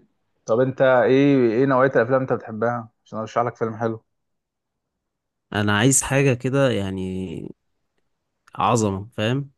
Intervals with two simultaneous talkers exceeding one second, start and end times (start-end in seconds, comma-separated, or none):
none